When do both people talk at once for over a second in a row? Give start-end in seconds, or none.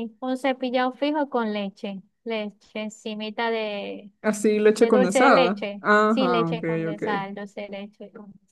4.8-7.0